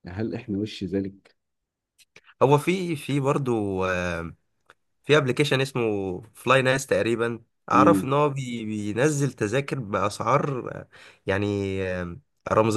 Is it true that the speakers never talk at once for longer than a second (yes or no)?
yes